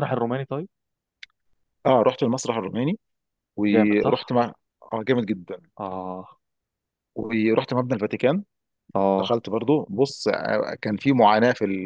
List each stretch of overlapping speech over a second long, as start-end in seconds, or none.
none